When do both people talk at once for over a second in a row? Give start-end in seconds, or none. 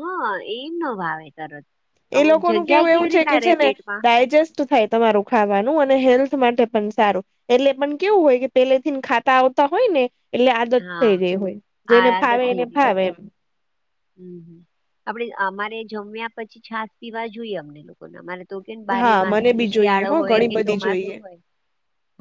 19.0-21.1